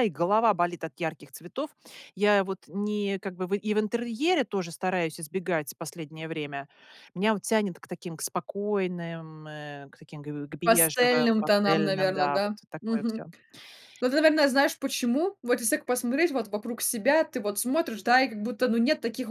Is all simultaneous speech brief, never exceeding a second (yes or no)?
no